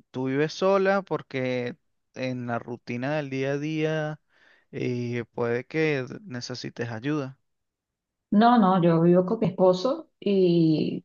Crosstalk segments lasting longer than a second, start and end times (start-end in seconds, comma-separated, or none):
none